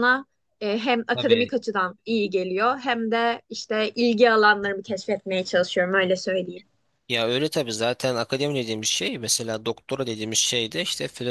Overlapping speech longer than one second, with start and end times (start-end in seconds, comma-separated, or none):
none